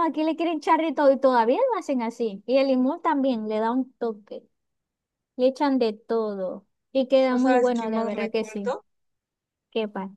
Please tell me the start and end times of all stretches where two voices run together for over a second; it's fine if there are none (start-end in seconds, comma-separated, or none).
7.3-8.8